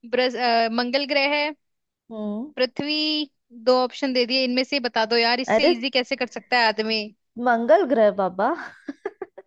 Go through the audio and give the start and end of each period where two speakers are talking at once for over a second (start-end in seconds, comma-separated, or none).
none